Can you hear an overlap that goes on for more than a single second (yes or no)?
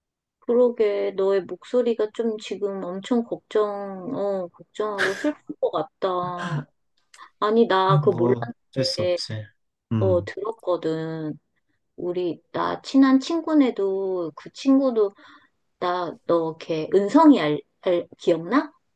yes